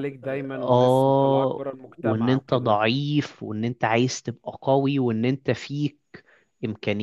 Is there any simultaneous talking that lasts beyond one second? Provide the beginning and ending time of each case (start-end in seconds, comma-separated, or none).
0.6-2.8